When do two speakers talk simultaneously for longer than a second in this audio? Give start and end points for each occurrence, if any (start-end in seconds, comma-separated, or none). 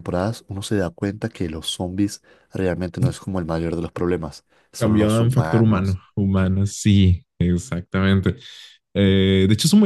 4.8-6.0